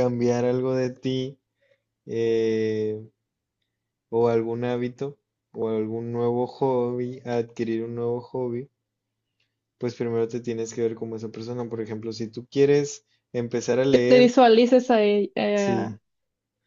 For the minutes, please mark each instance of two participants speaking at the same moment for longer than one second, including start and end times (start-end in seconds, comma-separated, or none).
none